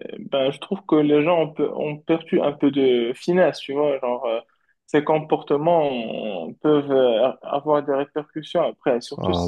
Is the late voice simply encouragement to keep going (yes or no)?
no